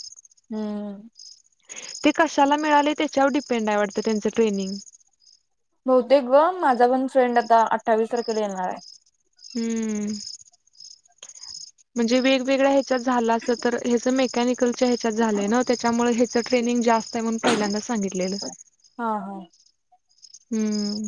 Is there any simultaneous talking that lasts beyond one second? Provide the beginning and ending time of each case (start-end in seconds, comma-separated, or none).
none